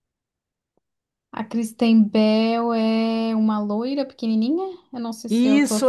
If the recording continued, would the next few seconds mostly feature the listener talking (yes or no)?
yes